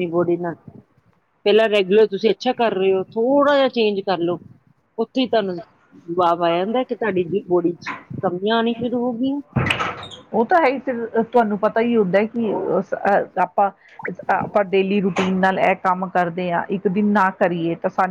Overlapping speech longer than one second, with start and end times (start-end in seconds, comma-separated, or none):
none